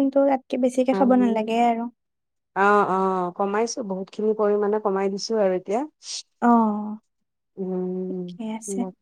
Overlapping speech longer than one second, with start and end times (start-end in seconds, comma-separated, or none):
none